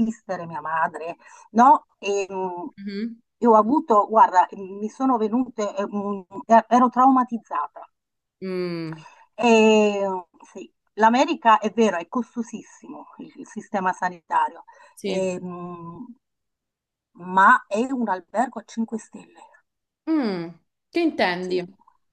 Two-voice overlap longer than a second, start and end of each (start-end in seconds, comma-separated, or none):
none